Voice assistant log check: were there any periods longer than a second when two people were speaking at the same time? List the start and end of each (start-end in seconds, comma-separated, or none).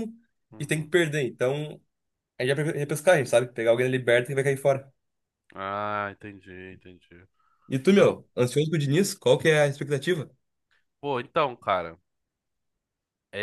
none